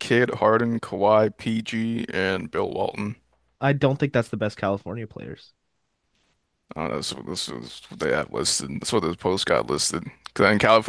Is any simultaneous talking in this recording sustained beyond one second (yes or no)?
no